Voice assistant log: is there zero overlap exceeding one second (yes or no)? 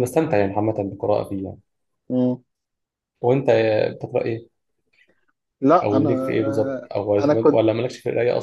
no